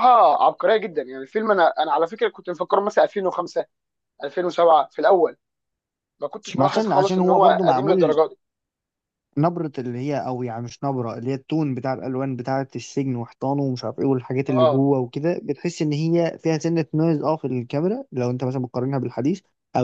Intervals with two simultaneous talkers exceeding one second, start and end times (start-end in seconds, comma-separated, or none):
6.6-8.2